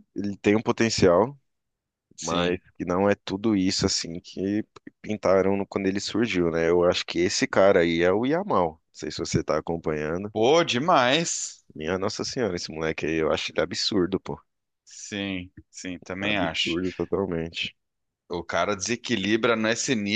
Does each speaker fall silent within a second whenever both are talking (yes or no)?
yes